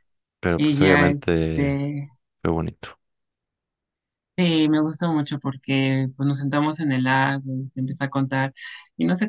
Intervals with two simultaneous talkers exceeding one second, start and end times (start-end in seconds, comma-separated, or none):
0.6-1.8